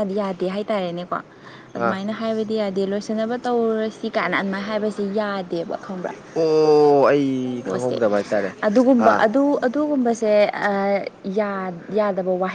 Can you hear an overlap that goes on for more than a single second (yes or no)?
no